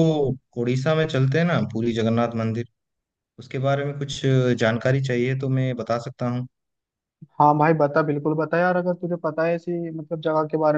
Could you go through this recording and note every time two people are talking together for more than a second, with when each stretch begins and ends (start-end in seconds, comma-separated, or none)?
none